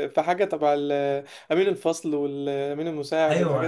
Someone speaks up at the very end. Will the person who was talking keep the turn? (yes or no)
no